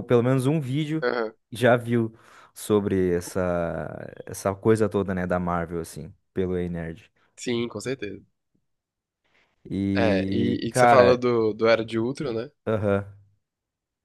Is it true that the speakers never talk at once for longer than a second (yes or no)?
no